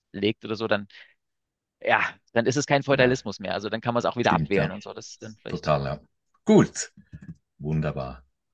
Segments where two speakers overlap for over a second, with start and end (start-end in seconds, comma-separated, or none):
none